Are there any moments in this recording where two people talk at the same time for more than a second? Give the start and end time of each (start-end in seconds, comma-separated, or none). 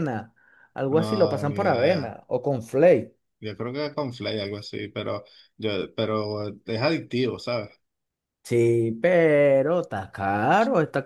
1.0-2.2